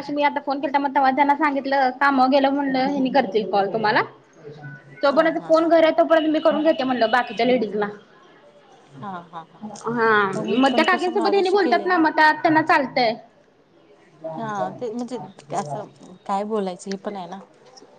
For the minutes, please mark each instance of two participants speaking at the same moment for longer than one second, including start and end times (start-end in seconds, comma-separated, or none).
10.6-12.0